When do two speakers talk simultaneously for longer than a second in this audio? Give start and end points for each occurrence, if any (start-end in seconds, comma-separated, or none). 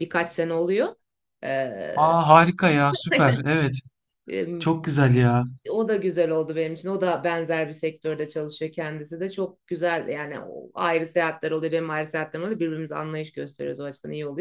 none